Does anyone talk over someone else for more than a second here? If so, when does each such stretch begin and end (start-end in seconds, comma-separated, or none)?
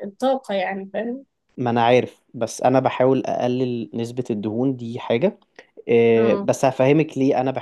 none